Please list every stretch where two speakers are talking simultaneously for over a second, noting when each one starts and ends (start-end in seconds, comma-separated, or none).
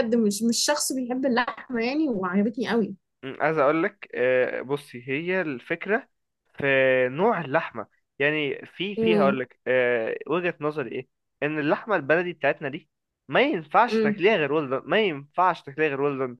none